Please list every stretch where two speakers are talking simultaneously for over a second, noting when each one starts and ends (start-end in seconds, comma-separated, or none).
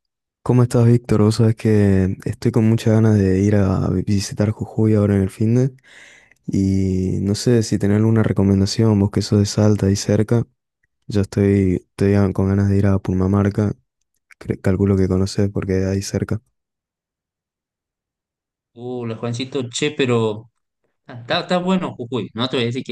none